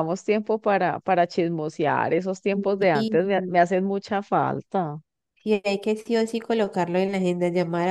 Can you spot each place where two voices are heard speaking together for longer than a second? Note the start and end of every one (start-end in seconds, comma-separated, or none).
none